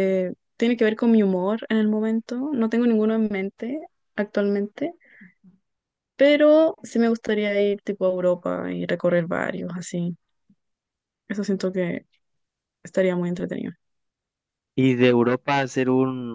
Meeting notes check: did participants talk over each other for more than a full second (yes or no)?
no